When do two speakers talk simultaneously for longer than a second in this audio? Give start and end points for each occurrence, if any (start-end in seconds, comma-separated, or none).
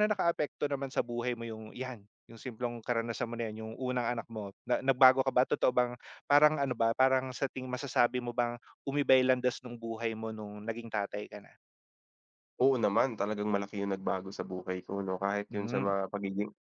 none